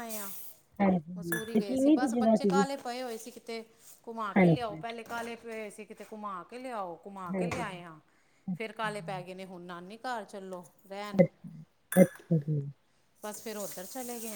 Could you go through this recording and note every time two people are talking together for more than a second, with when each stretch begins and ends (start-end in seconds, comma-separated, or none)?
1.2-2.6